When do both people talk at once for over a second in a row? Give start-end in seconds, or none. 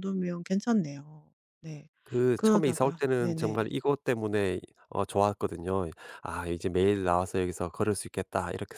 2.3-3.7